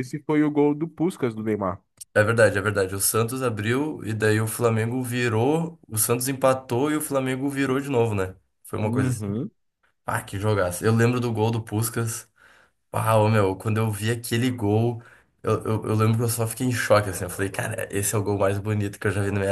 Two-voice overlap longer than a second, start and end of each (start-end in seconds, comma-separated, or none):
none